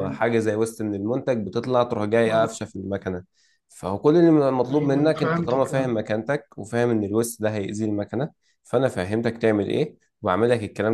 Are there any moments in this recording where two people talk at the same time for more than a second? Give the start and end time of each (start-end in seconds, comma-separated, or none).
4.7-6.0